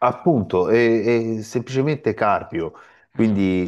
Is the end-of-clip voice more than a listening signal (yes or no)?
no